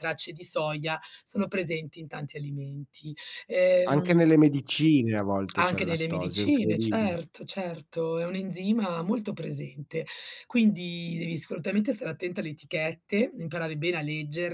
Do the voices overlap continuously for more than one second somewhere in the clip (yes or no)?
yes